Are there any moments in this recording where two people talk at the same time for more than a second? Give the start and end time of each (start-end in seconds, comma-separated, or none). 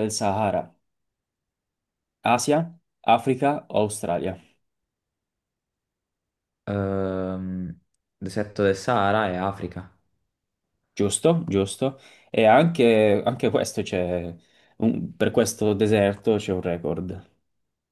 none